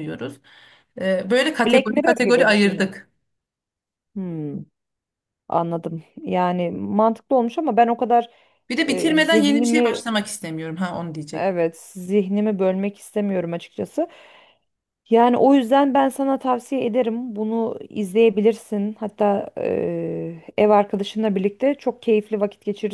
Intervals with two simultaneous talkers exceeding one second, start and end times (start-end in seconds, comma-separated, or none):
1.7-2.9, 8.8-10.0